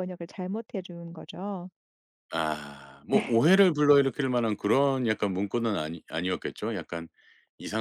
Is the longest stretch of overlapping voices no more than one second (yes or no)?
yes